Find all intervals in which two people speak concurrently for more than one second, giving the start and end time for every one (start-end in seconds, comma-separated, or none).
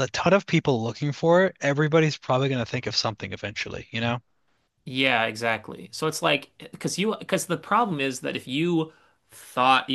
none